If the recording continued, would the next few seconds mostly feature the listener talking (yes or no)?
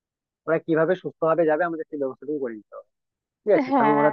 no